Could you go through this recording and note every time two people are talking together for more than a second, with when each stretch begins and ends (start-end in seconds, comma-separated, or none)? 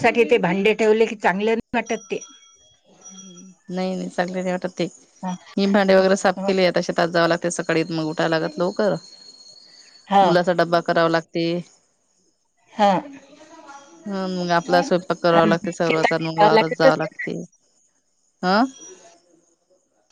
15.2-17.2